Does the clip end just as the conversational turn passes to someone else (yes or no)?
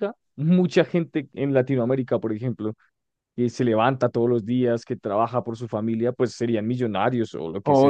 yes